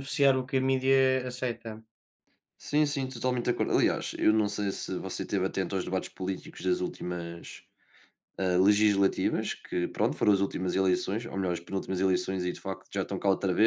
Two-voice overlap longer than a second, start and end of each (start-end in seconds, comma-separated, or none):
none